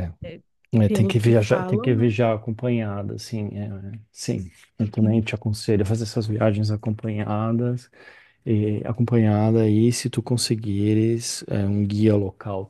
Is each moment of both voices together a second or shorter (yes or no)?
no